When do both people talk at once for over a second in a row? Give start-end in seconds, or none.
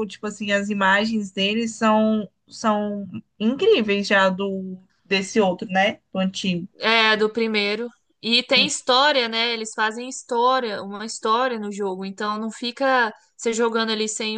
none